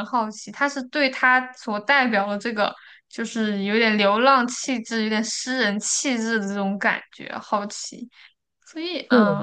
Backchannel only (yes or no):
yes